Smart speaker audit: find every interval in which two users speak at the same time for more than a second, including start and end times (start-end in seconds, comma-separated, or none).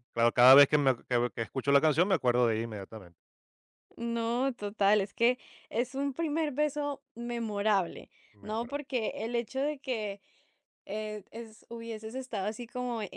none